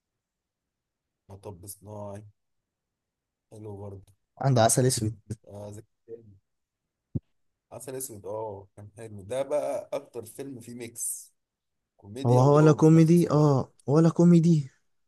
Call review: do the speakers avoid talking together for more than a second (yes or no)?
no